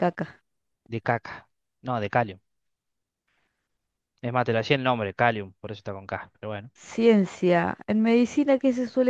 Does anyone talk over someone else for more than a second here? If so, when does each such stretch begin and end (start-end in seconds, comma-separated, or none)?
none